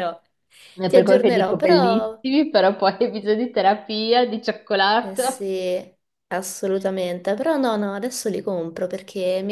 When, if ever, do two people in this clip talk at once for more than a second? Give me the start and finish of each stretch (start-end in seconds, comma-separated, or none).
0.8-2.2